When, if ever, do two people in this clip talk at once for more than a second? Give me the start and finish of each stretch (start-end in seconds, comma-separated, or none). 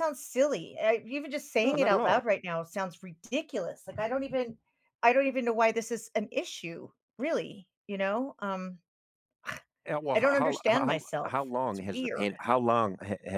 10.1-12.4